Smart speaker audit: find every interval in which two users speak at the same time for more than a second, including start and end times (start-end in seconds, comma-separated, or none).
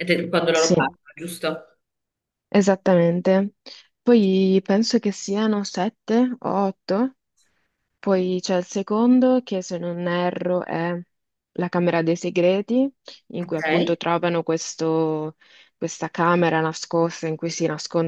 none